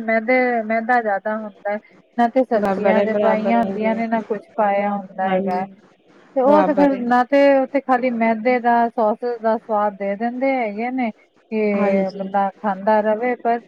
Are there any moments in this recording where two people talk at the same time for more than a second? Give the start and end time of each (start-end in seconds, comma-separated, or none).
2.6-3.9